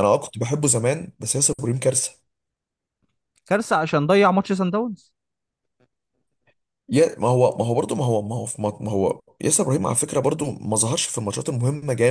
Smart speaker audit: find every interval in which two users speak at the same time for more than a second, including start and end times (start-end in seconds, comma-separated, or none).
none